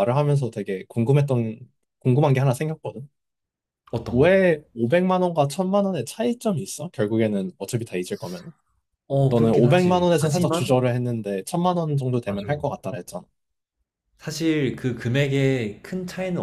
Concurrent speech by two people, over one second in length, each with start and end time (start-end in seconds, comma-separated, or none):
9.3-10.8